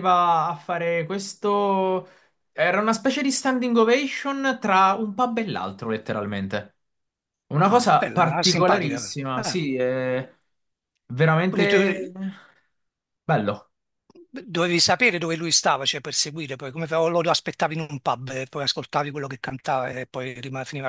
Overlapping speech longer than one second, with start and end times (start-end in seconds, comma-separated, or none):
7.6-9.6